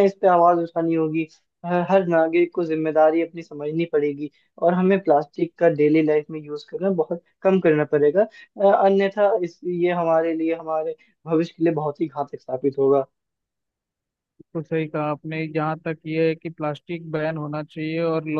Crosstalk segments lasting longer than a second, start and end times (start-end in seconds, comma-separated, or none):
none